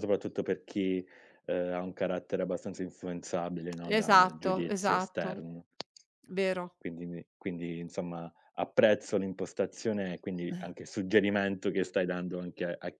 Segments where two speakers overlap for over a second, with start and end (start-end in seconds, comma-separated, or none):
4.0-5.5